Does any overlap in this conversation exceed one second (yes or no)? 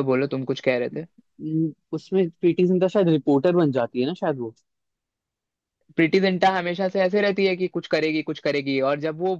no